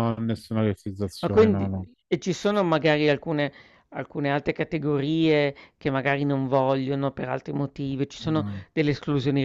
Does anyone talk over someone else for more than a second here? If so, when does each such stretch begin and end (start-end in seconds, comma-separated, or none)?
none